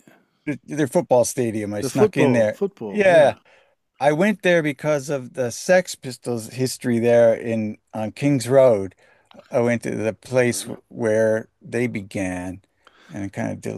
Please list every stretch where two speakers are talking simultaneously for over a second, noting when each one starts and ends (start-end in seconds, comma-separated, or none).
1.8-3.4